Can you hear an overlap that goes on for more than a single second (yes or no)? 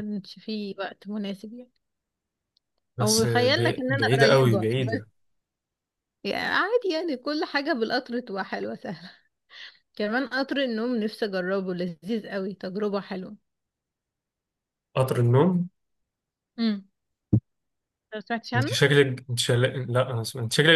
yes